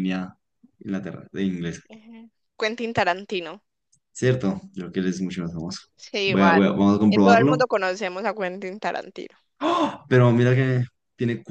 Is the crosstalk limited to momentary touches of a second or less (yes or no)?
no